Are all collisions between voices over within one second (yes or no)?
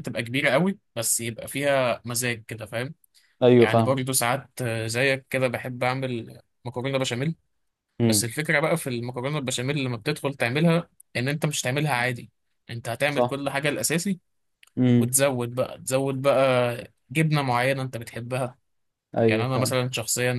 yes